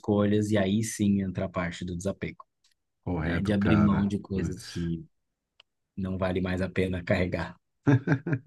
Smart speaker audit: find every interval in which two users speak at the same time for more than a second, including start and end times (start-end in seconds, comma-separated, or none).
3.2-4.9